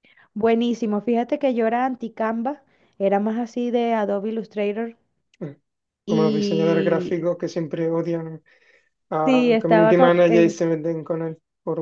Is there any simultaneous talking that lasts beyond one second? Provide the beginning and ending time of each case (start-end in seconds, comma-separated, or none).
6.1-7.3, 9.2-10.6